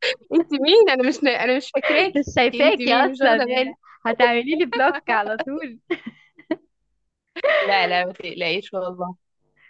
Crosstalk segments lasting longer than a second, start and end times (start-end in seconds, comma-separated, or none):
2.2-3.8